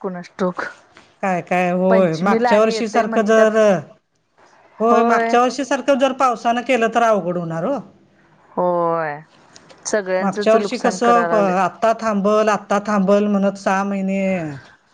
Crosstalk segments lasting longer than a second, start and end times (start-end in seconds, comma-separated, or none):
1.9-3.5